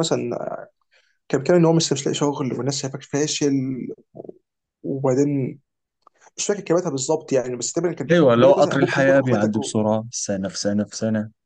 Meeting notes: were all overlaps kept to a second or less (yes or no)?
no